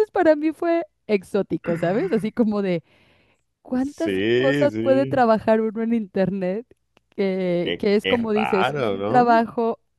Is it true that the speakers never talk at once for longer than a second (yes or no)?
no